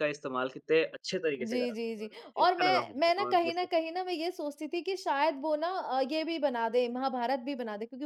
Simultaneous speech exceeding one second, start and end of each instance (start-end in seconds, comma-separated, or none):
1.4-3.7